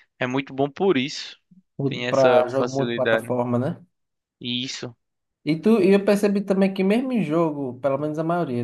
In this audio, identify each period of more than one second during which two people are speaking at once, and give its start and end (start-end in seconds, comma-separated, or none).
1.9-3.3